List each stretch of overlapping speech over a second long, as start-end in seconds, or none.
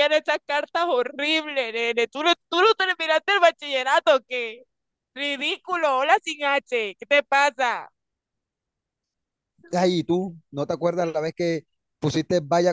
none